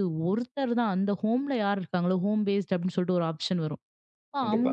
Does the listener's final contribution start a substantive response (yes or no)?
no